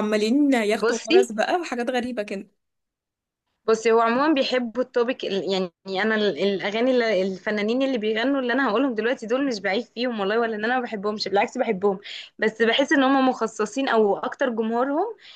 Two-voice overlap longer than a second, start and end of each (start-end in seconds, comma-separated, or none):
none